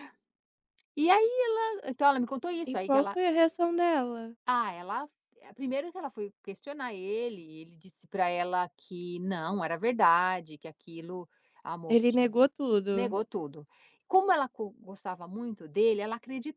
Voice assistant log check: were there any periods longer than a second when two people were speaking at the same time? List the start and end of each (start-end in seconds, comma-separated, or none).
none